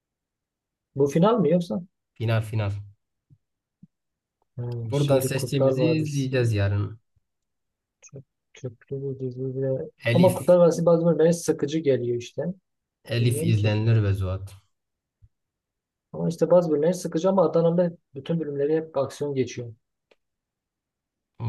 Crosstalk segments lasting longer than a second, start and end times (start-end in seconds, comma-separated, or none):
4.9-6.3